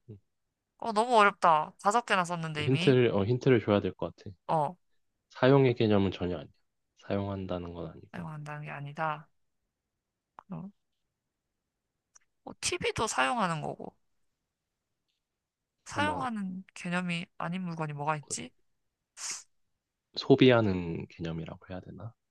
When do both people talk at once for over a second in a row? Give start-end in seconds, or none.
none